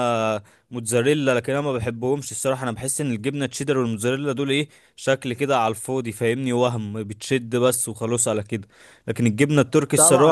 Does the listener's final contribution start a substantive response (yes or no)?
yes